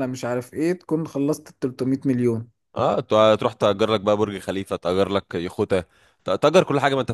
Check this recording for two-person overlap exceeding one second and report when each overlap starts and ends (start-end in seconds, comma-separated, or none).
none